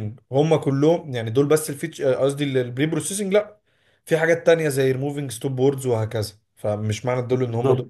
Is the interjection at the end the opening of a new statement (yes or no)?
no